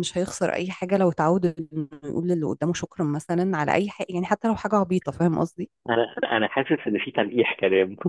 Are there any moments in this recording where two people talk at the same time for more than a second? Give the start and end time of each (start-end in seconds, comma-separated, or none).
none